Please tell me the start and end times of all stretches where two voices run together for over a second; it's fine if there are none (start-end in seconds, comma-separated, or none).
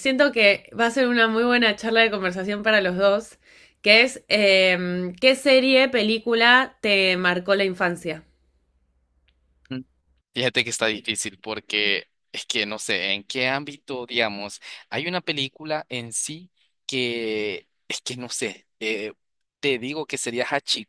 none